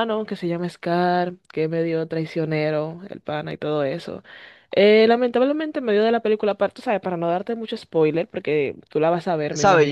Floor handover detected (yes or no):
yes